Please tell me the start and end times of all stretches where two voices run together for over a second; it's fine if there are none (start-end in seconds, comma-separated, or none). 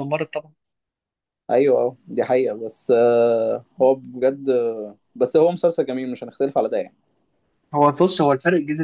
none